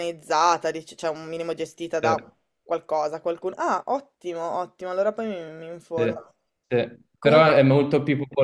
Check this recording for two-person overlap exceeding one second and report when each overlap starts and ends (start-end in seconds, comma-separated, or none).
none